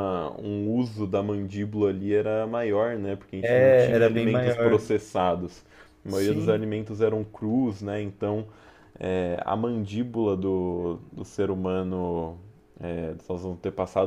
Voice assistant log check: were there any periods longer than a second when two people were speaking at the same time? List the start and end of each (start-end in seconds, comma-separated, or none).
3.4-4.8